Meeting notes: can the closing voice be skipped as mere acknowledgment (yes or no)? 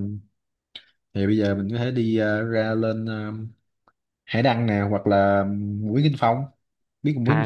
no